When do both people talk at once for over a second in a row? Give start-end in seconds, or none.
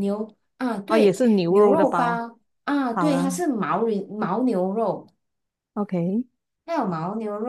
0.9-2.2